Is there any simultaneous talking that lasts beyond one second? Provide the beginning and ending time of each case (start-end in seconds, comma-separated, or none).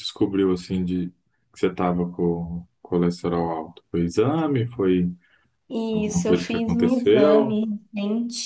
5.9-7.6